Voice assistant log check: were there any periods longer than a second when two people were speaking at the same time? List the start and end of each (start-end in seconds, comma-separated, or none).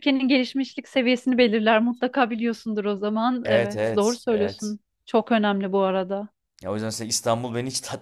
3.4-4.8